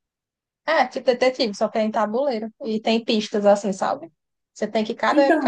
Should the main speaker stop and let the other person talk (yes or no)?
no